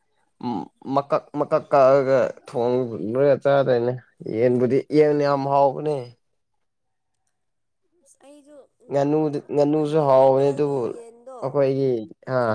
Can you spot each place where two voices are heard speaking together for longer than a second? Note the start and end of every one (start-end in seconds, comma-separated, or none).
9.6-10.8